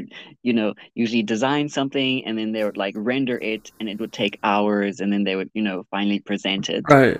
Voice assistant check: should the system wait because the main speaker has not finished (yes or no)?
no